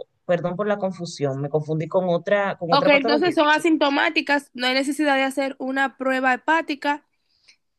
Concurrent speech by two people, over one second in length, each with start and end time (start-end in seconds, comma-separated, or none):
2.7-4.0